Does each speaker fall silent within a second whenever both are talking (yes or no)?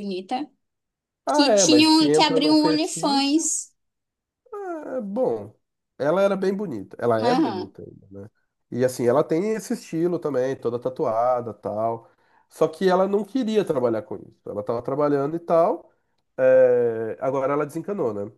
no